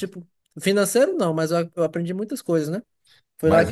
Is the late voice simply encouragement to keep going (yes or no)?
yes